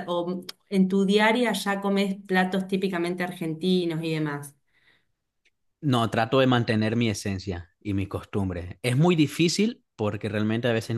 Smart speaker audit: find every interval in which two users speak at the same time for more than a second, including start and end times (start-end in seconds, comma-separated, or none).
none